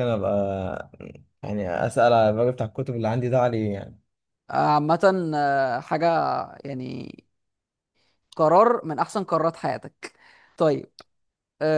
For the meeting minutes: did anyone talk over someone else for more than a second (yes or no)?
no